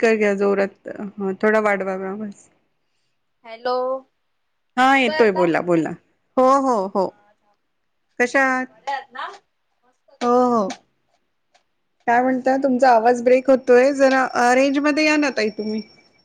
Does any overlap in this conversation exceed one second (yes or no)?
no